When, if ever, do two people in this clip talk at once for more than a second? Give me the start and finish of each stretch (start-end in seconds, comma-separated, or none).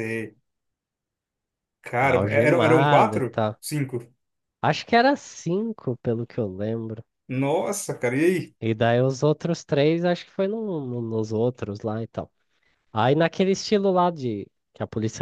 2.0-3.5